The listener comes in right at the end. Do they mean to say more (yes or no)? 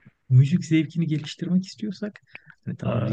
no